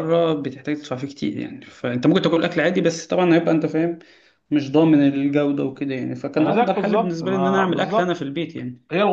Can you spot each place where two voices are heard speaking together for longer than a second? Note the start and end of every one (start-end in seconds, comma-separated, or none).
6.4-8.2